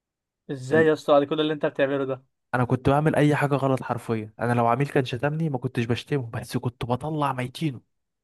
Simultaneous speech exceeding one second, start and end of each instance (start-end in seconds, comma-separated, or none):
none